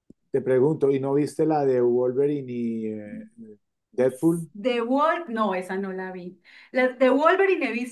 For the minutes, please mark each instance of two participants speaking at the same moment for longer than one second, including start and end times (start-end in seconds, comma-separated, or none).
none